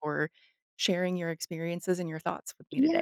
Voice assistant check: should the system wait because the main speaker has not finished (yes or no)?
no